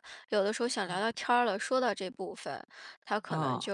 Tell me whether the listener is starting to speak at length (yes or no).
no